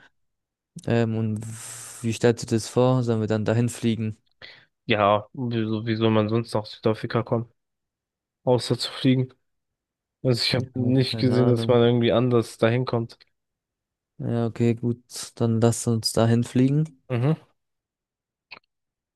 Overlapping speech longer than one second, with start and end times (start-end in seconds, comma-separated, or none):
10.6-11.8